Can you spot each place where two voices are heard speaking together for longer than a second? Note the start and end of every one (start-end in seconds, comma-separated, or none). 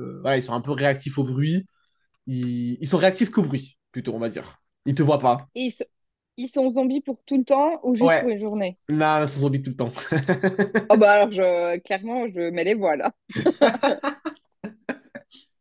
none